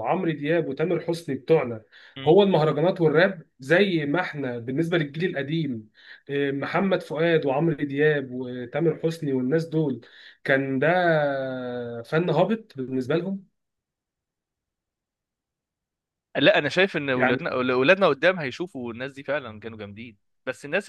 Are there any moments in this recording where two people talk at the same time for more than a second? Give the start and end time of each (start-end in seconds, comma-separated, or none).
none